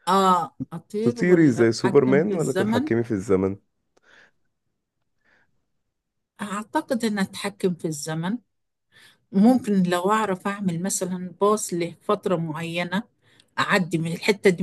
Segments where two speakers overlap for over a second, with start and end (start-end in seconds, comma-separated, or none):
1.0-2.9